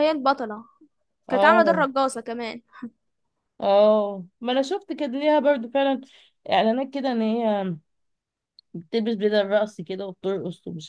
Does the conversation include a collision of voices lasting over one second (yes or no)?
no